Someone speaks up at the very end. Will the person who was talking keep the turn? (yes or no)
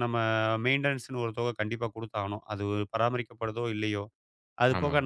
yes